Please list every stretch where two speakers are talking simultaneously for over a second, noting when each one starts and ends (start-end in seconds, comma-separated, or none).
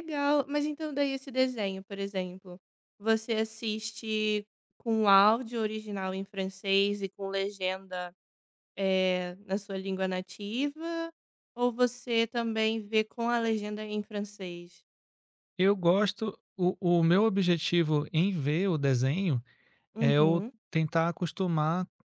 none